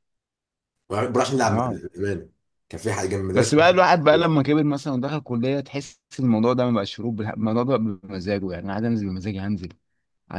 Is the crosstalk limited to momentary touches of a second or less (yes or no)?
yes